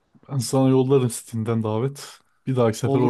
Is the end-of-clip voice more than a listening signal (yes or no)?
yes